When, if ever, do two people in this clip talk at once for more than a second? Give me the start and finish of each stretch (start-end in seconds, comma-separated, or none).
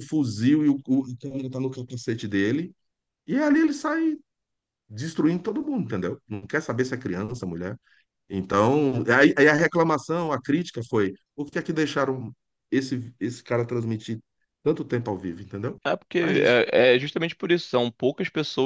none